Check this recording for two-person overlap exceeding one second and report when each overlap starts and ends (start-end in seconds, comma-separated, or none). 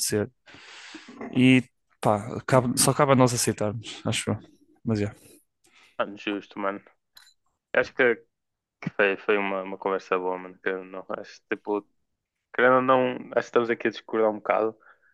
none